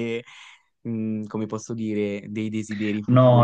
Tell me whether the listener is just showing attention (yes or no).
no